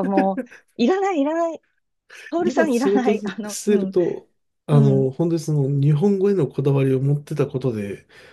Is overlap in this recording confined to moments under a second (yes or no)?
no